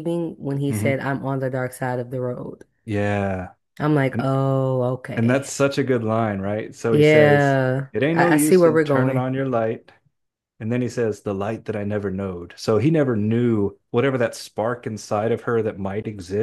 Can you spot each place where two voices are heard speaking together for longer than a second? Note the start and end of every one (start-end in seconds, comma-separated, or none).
6.9-9.3